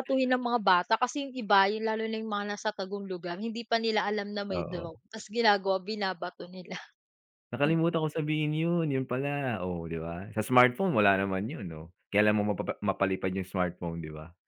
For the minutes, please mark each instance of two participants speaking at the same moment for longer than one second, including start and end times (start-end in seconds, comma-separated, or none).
none